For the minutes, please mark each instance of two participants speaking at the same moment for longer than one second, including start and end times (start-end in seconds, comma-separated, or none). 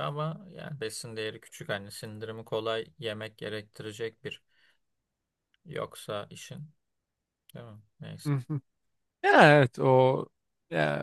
none